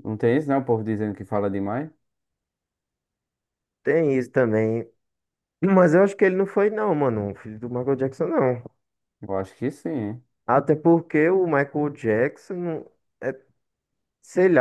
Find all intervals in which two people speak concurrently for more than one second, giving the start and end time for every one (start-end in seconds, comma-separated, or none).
none